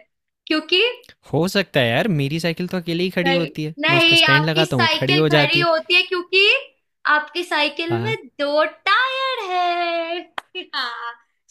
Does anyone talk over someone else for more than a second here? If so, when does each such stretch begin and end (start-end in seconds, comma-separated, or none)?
3.2-5.7